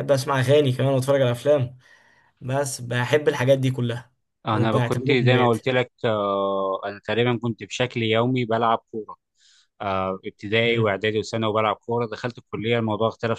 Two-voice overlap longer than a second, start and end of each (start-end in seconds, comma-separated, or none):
4.5-5.7